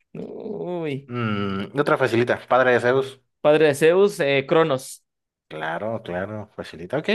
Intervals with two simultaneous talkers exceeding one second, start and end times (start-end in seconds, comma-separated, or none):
none